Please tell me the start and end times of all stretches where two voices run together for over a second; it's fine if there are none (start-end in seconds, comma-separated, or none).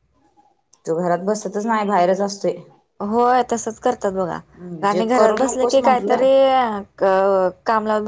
4.9-6.2